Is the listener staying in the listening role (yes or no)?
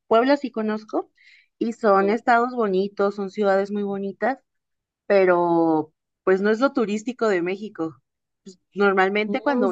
yes